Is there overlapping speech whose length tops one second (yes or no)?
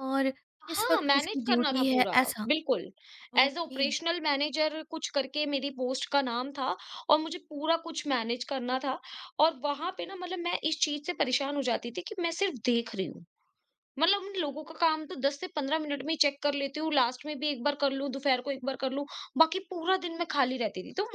yes